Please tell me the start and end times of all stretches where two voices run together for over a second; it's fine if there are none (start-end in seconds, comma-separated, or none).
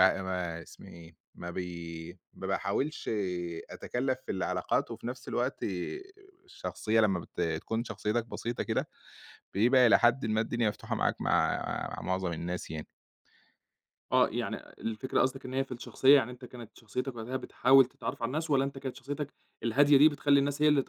none